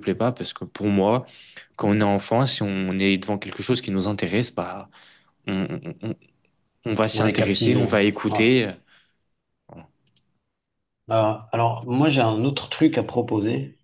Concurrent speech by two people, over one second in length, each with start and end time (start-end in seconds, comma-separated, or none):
7.2-8.4